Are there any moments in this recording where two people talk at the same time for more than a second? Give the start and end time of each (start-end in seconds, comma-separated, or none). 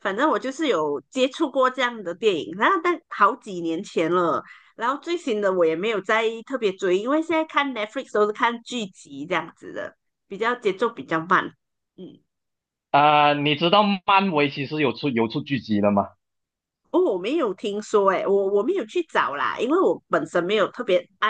none